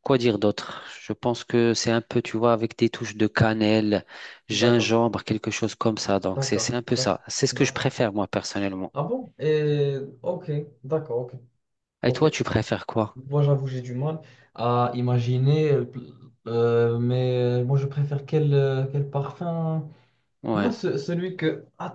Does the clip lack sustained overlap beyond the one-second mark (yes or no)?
no